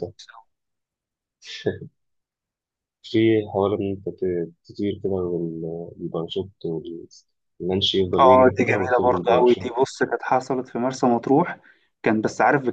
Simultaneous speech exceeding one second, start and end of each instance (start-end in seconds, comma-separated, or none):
8.2-10.0